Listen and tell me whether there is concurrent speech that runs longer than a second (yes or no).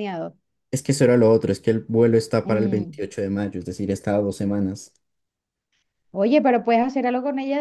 no